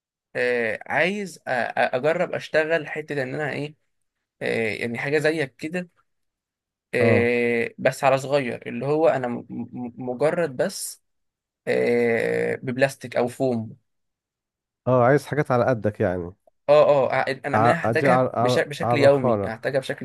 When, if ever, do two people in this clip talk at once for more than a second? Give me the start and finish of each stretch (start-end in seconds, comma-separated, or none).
17.5-19.5